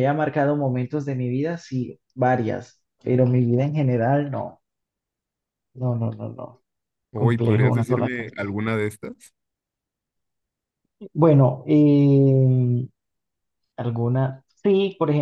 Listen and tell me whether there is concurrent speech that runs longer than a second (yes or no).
yes